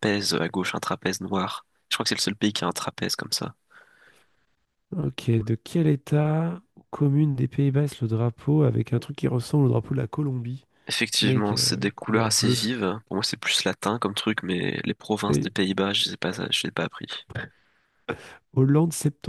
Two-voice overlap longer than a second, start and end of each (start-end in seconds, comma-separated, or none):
11.2-12.6